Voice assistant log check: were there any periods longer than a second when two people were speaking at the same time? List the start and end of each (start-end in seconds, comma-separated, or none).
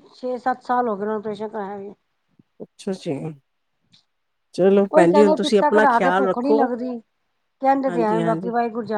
4.9-6.7